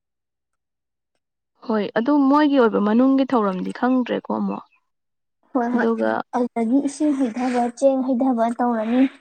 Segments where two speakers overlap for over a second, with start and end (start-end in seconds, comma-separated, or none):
none